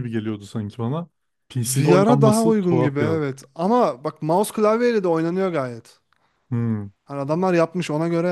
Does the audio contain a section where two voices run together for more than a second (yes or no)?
yes